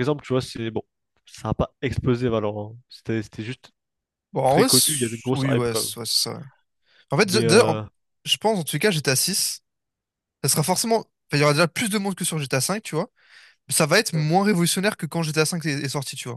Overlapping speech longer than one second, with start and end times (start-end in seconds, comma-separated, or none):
4.5-5.9